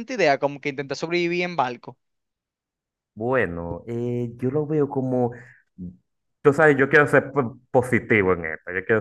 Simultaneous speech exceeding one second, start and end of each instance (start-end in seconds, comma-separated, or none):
none